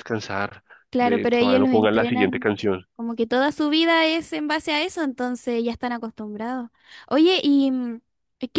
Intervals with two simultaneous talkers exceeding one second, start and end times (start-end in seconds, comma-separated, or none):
0.9-2.5